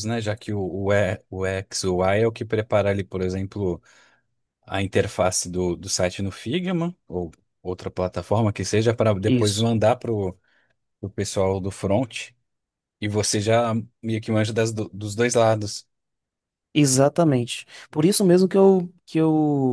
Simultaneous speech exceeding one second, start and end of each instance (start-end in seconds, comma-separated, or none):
none